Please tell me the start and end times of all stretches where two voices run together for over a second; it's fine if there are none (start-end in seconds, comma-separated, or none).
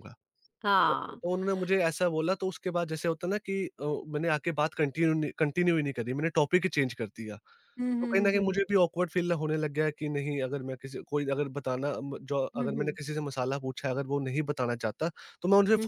none